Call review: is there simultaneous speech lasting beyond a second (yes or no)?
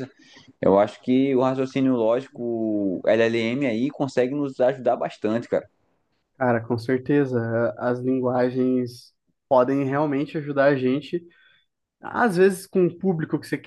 no